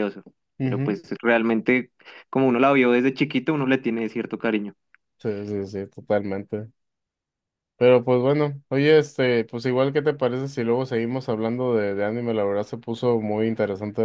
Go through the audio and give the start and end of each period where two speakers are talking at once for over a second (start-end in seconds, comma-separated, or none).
none